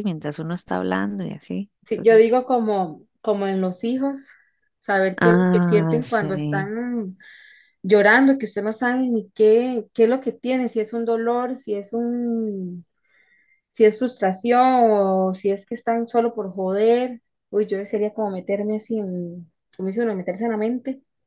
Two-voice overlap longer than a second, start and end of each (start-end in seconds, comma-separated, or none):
5.2-6.7